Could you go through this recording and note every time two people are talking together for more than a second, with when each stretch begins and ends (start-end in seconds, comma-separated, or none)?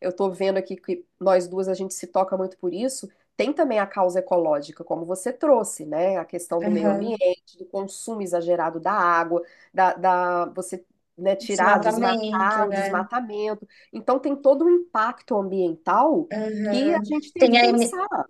11.4-13.0